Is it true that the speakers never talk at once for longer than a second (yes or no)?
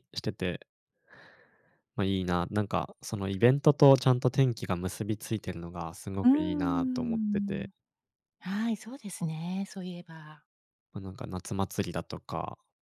no